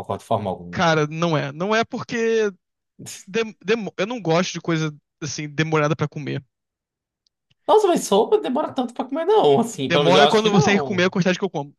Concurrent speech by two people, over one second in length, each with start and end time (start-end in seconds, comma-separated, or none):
9.9-11.1